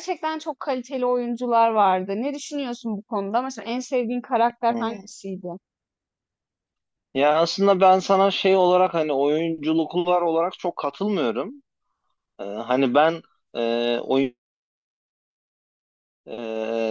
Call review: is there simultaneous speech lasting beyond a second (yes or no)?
no